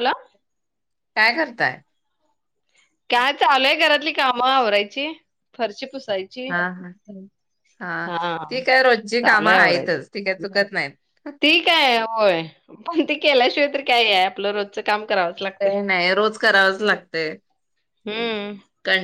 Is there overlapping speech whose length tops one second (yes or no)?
no